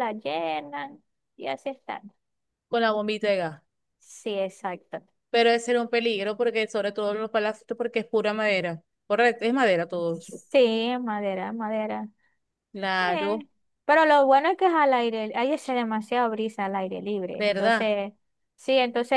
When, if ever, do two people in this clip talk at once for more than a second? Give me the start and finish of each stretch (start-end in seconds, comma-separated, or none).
none